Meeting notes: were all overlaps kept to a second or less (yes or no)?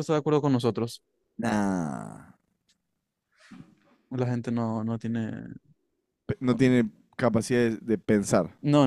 yes